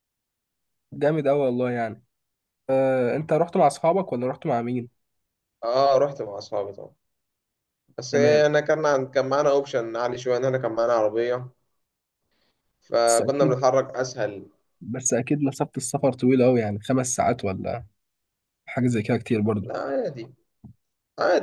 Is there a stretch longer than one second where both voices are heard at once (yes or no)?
no